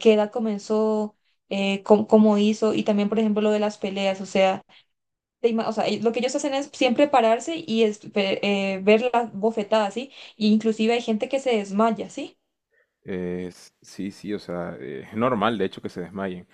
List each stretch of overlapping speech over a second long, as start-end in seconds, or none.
none